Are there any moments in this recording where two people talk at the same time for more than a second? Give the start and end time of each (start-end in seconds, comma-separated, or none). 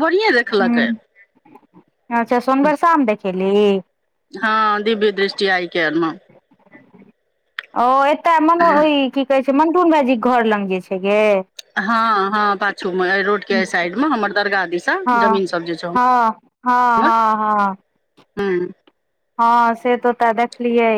none